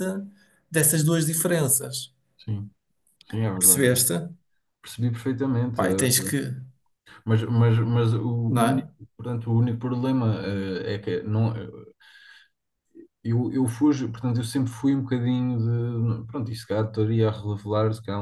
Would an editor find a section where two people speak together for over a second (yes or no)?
no